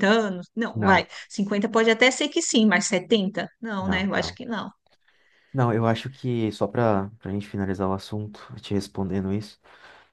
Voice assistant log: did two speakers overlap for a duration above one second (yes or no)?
no